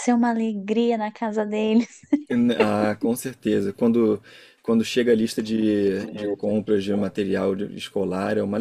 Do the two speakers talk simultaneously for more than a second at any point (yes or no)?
no